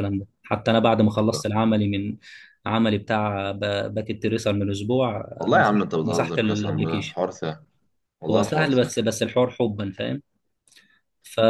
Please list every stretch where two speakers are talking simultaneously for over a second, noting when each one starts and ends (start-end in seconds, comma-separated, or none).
5.4-7.2